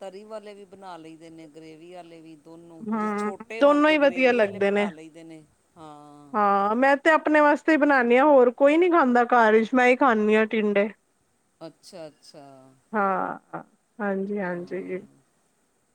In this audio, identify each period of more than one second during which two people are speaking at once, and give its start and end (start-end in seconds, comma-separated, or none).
2.9-4.9